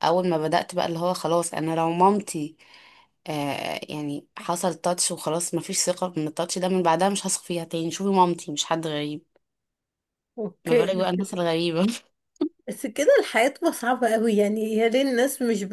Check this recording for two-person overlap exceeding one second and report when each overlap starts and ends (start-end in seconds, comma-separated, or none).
none